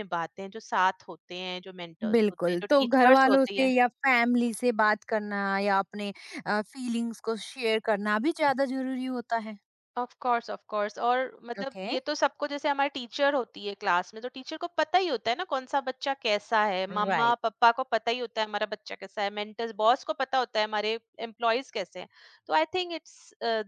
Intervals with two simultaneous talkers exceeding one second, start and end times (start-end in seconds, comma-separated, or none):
2.1-3.7